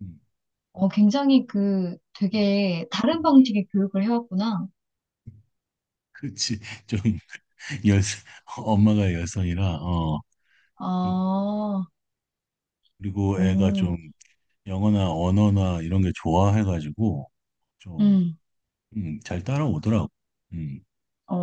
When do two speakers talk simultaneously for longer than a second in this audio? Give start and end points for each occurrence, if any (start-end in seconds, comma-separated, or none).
none